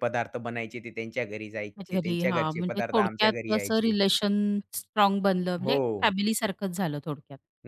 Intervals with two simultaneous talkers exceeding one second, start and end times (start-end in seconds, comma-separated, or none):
1.8-3.9